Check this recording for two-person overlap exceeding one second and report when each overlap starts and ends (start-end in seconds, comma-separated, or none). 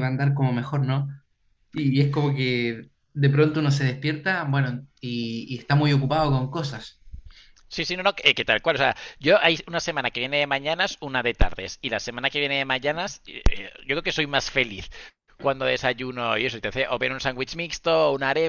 none